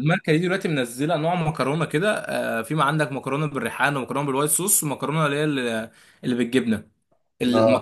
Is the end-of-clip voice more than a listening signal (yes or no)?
no